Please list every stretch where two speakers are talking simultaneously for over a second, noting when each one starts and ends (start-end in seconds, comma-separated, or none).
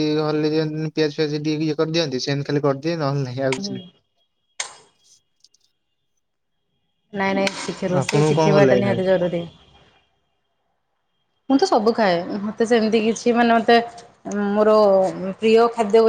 7.8-9.1